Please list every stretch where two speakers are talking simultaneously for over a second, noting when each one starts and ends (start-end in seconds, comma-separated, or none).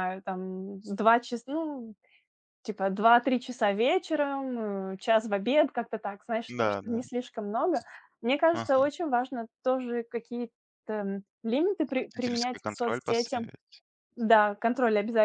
12.0-13.4